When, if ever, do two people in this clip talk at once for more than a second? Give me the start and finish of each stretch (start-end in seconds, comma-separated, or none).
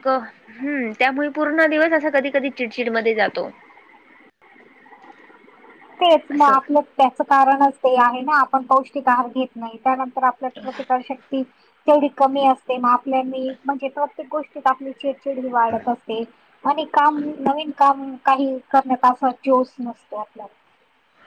none